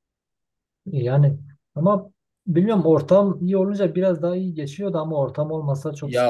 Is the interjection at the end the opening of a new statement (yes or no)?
yes